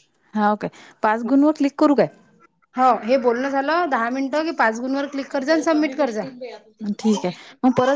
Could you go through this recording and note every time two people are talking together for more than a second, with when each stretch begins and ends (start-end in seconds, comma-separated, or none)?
none